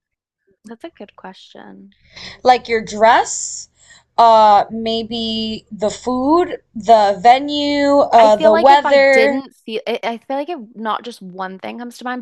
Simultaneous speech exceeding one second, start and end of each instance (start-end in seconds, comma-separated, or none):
8.2-9.4